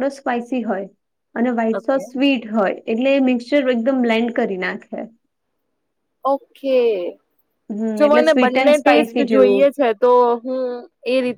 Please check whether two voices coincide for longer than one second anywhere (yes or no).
yes